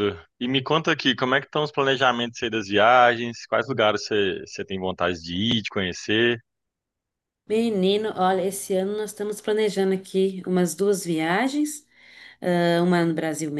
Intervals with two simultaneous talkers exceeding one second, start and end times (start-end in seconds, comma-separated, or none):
none